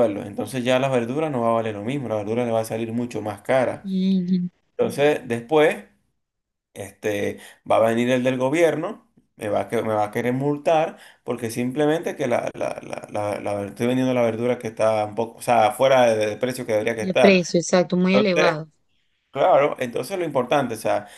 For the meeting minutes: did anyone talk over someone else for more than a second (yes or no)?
no